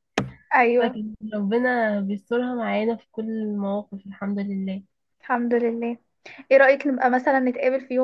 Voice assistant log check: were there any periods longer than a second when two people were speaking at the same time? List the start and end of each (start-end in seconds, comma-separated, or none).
none